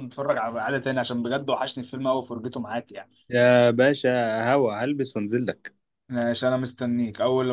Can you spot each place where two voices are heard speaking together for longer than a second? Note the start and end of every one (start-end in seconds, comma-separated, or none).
none